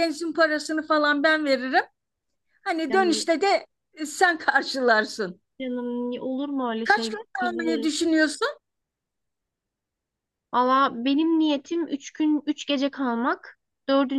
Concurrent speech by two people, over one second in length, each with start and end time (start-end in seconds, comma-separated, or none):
6.8-8.1